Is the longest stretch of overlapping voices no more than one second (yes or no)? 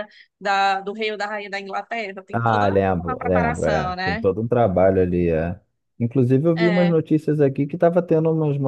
no